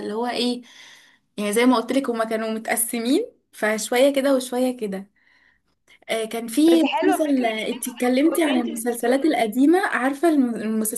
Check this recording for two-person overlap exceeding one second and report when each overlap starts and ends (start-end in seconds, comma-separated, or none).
7.0-9.6